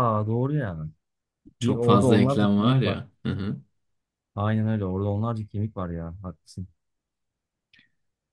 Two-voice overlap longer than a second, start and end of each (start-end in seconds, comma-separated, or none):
1.6-3.0